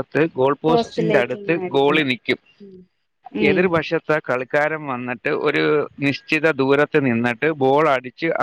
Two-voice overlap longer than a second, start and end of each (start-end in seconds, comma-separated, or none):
0.7-2.1